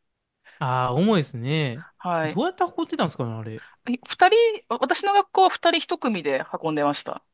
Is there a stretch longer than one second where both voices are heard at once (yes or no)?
no